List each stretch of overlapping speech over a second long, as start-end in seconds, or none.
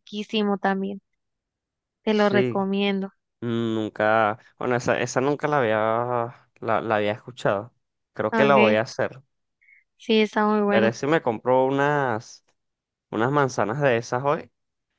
none